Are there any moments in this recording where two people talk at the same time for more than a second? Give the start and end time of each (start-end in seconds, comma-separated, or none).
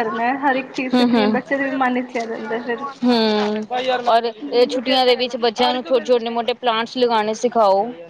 none